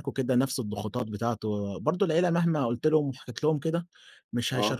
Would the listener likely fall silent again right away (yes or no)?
yes